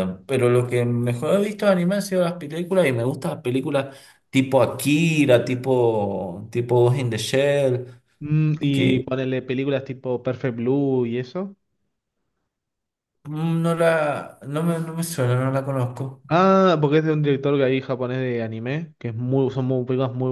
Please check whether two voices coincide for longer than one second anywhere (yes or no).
no